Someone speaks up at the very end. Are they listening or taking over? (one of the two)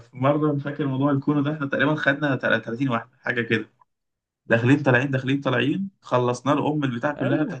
listening